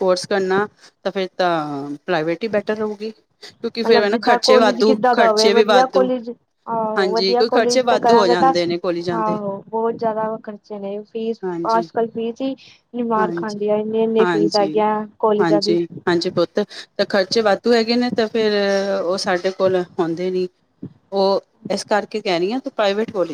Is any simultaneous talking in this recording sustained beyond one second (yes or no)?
yes